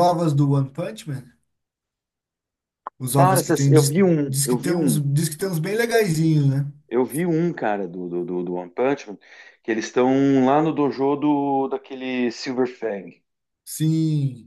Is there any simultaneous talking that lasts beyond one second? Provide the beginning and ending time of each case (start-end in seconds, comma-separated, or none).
3.2-5.0